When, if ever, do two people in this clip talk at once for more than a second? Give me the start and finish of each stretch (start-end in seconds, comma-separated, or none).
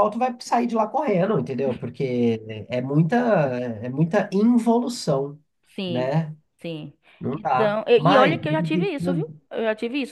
7.3-9.4